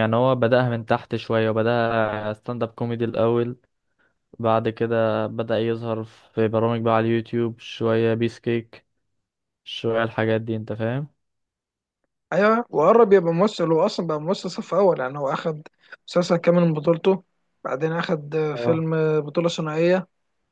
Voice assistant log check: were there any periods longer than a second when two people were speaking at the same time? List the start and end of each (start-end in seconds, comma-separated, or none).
none